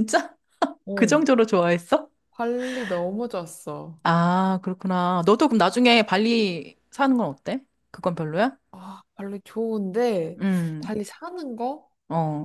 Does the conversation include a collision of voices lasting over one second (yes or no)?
no